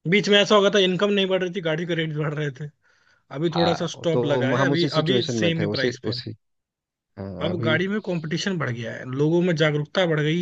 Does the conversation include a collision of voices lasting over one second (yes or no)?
yes